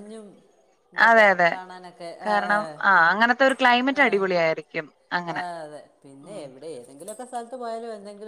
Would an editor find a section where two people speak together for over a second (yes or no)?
no